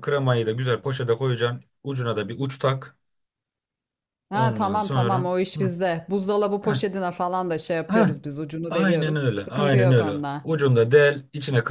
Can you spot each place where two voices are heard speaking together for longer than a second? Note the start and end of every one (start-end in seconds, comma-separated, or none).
4.3-5.7, 8.7-10.5